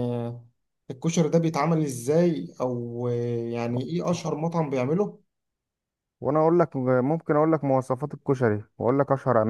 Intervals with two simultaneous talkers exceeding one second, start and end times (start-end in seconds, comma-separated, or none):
none